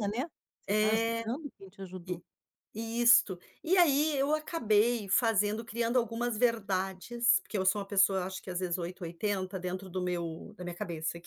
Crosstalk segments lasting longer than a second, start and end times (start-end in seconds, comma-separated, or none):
none